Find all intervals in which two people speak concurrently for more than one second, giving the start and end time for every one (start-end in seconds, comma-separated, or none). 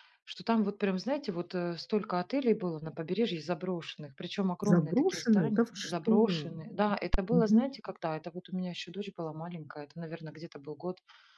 4.6-6.1